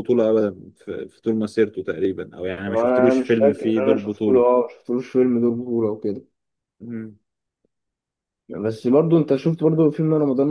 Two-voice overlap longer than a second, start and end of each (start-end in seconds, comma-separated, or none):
2.7-4.5